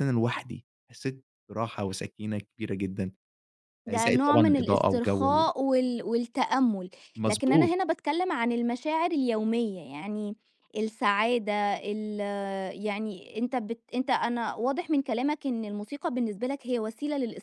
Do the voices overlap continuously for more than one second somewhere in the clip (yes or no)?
yes